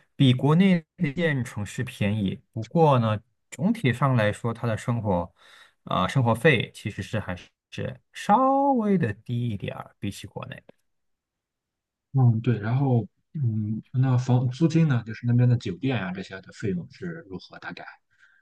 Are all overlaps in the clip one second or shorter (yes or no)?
yes